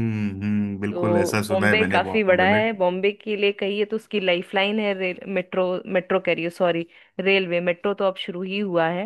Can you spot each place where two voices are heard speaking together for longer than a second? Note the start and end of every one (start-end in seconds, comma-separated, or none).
0.9-2.6